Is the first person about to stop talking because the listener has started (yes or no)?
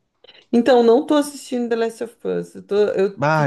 yes